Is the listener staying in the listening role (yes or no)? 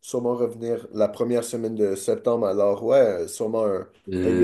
no